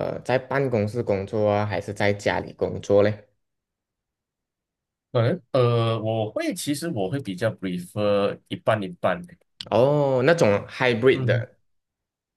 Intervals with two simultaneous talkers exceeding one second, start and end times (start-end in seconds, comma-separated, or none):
none